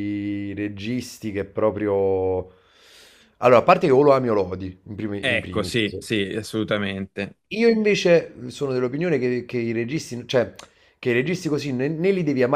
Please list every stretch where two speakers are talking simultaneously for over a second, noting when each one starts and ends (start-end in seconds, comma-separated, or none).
none